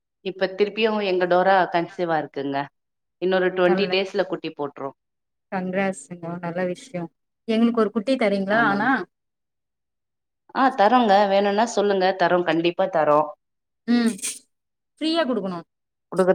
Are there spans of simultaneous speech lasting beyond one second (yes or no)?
no